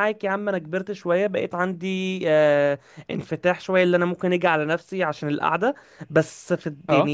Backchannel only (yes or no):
yes